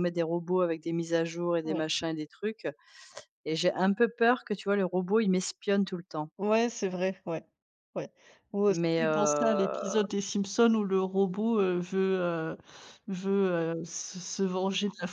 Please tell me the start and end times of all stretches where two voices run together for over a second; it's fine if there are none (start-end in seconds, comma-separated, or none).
8.7-10.0